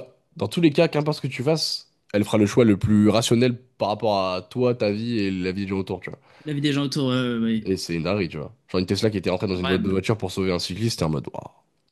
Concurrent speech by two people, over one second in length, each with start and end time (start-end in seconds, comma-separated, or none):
none